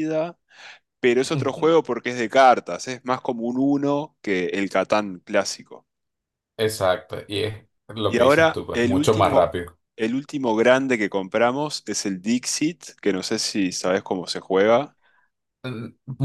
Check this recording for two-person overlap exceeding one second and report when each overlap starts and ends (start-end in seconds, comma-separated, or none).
8.1-9.5